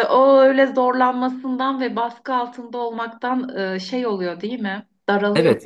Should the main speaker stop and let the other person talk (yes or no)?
yes